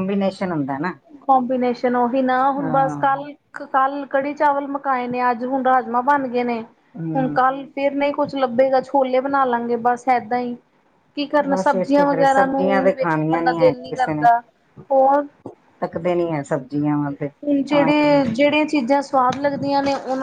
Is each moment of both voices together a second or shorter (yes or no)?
no